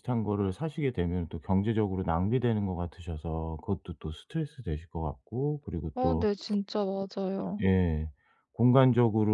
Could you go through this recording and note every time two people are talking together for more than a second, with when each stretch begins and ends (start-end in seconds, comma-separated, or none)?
none